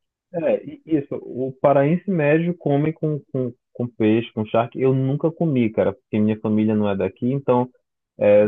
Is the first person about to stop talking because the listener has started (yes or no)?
no